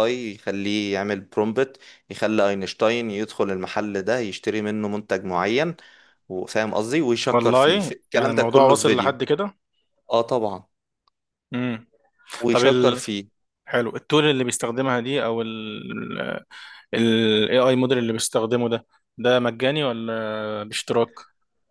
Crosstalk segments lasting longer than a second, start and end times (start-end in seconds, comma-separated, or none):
7.3-9.2